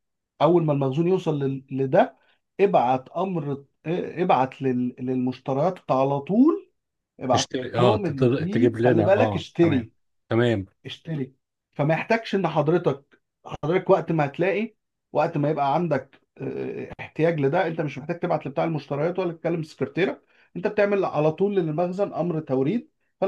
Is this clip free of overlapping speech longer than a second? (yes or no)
no